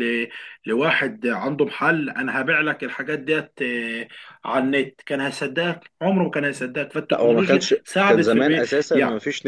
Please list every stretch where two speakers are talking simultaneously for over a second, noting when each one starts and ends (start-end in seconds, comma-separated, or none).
7.1-8.6